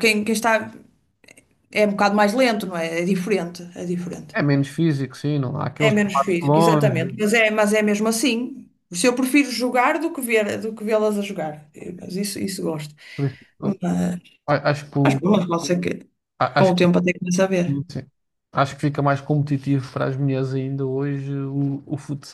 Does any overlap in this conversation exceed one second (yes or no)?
yes